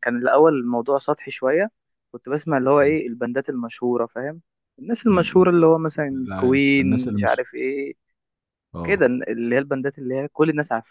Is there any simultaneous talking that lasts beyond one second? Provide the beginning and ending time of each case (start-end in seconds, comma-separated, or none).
6.1-7.5